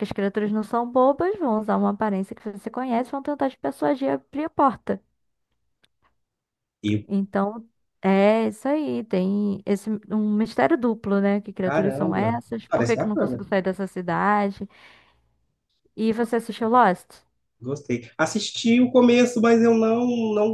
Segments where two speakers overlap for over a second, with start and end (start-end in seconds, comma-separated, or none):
11.6-13.4